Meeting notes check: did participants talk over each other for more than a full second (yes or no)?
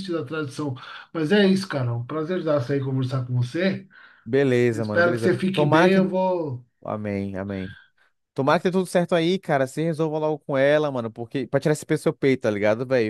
yes